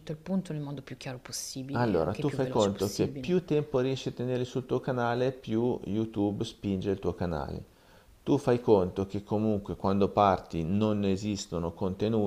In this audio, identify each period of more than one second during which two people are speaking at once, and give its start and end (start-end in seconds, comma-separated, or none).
1.7-3.3